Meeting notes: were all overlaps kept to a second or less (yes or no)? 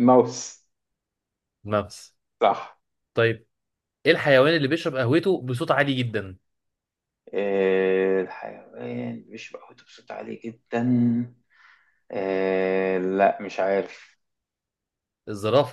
yes